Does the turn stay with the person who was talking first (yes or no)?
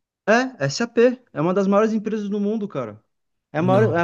yes